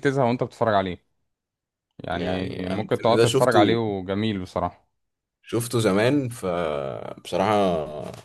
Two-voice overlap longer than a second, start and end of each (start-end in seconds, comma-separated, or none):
2.1-3.8